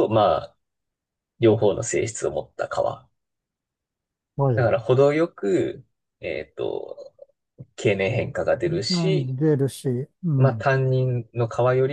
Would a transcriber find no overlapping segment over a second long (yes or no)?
yes